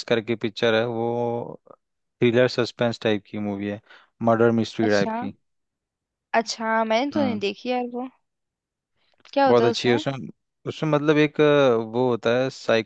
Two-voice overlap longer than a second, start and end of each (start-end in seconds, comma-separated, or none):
none